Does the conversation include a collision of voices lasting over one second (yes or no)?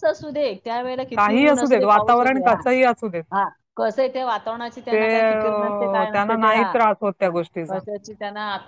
yes